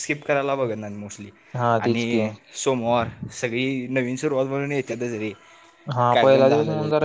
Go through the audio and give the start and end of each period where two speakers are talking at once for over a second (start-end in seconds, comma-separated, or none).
none